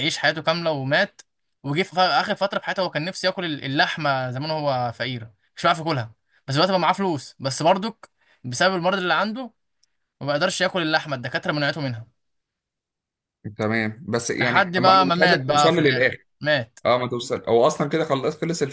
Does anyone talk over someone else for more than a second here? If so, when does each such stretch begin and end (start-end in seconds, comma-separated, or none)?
14.4-16.3